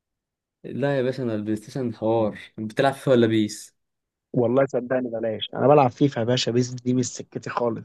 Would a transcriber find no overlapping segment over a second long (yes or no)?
yes